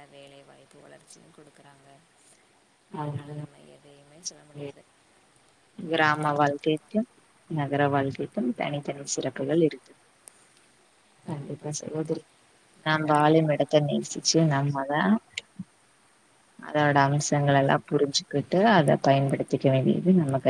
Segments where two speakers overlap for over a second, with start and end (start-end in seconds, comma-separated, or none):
12.9-15.0, 16.7-19.5